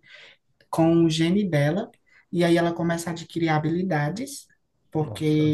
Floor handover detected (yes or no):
no